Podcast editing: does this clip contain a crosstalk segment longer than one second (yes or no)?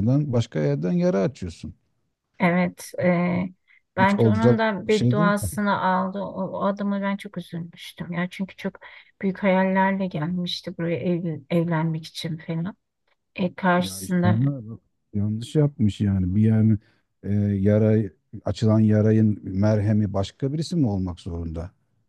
yes